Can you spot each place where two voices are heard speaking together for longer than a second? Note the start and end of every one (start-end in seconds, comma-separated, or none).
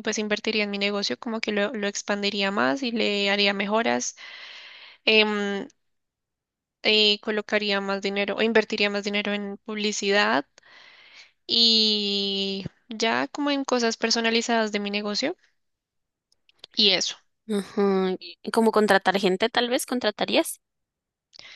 none